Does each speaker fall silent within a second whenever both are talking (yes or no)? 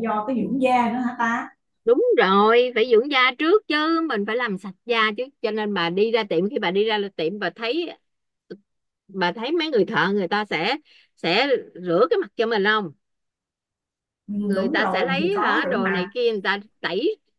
no